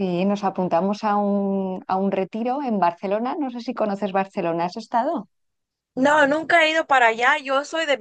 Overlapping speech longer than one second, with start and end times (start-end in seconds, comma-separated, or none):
none